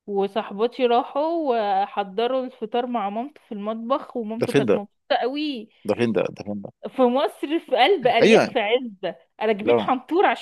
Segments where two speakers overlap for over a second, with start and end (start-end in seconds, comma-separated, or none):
none